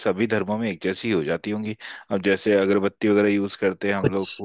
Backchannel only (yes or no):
no